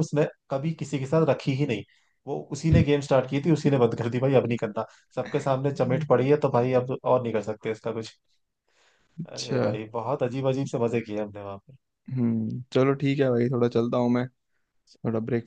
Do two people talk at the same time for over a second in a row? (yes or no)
no